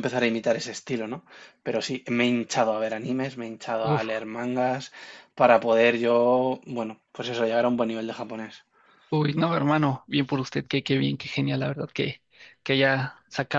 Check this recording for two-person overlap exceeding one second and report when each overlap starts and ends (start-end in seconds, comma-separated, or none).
none